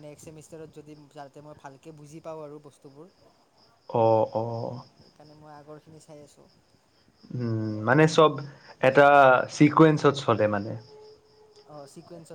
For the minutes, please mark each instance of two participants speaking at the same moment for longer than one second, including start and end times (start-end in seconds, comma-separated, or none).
none